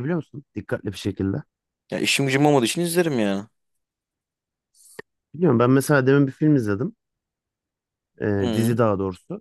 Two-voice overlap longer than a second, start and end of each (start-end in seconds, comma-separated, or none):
none